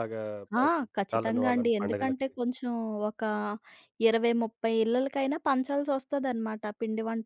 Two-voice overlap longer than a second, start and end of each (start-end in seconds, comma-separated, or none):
0.6-2.3